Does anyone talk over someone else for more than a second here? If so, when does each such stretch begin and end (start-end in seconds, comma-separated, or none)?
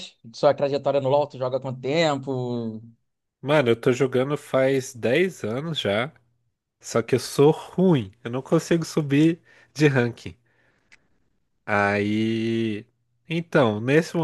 none